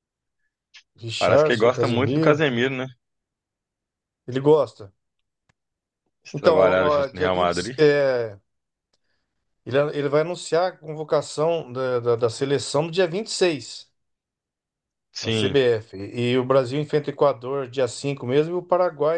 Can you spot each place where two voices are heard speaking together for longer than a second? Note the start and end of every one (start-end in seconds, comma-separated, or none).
1.2-2.4, 6.3-7.7